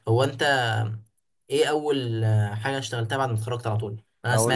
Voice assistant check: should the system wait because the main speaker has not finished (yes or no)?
yes